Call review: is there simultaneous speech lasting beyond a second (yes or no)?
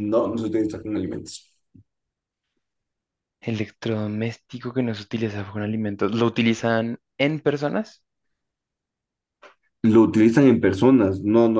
no